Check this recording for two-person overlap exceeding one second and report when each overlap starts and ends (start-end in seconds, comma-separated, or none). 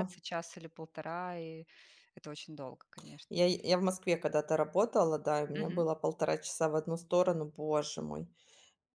none